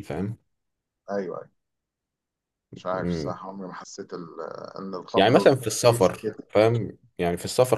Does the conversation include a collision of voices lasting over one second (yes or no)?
yes